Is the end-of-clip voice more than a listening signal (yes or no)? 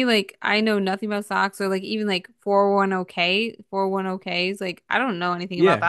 yes